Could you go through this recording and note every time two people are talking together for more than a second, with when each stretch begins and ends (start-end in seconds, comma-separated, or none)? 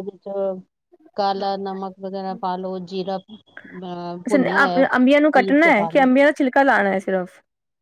4.3-6.1